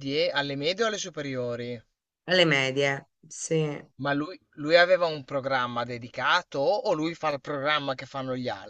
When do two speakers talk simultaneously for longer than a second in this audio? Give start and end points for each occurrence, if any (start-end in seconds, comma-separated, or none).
none